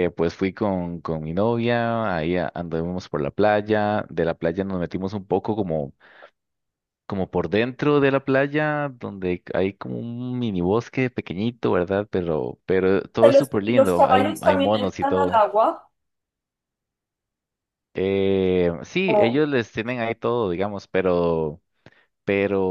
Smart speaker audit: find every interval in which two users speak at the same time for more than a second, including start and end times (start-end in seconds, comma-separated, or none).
13.2-15.4